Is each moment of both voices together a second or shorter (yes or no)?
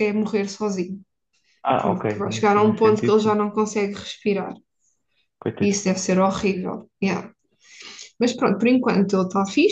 no